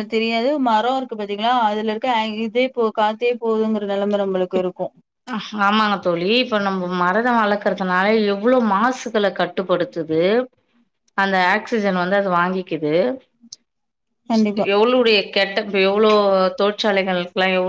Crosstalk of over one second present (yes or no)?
no